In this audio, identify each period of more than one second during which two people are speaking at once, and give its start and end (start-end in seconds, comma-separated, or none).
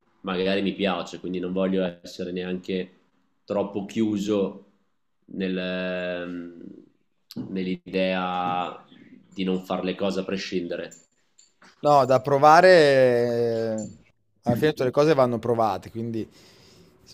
none